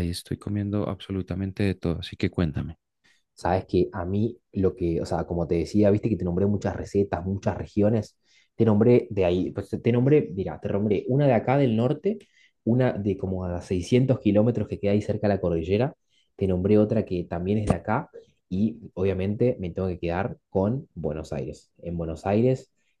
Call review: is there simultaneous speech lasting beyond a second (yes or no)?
no